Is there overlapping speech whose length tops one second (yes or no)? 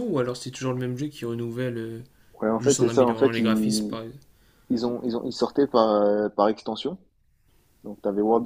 yes